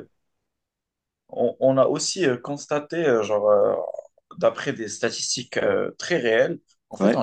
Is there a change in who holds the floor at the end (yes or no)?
no